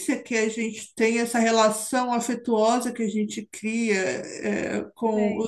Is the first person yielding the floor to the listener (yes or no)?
no